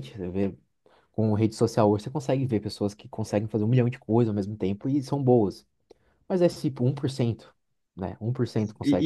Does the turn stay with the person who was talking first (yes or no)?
no